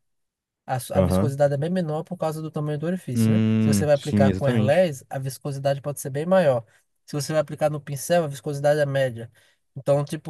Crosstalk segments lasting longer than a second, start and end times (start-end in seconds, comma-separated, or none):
3.1-4.9